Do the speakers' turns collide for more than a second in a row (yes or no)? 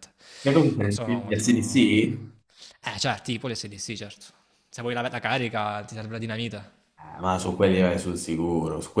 yes